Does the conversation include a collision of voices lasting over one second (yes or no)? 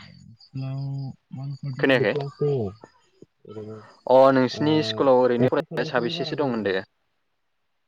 yes